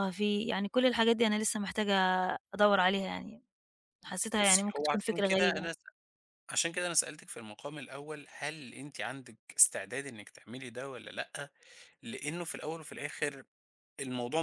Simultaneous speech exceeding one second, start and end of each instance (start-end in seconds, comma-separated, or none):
4.4-5.7